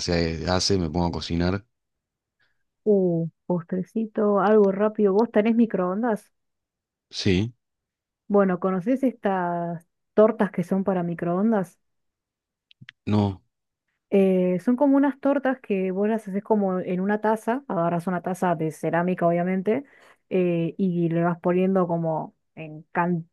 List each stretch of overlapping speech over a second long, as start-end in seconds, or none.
none